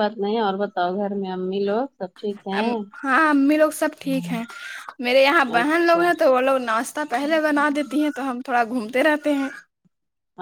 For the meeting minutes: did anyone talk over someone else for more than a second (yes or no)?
no